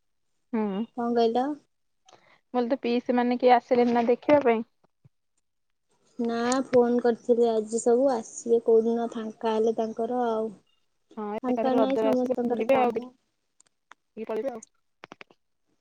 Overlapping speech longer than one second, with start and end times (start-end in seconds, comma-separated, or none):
11.5-13.0